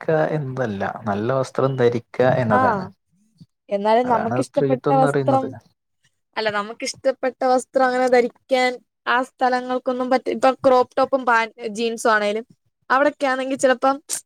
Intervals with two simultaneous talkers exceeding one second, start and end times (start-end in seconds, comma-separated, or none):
4.1-5.5